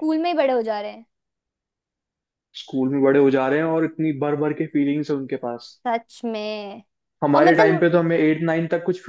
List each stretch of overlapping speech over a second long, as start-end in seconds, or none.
none